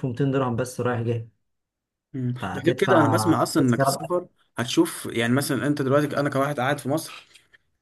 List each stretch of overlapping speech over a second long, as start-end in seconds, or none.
2.4-4.0